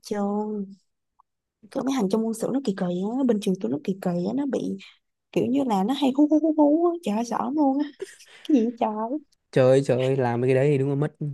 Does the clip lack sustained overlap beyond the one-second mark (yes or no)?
yes